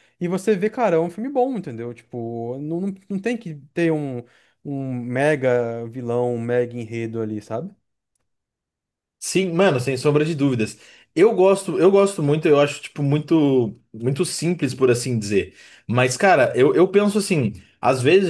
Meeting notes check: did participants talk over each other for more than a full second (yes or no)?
no